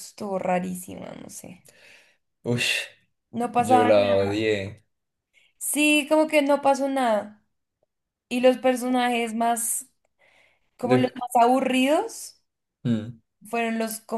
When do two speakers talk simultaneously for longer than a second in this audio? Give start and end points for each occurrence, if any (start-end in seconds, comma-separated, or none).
none